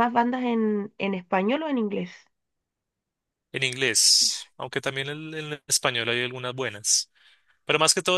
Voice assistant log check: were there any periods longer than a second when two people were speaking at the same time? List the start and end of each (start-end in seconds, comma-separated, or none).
none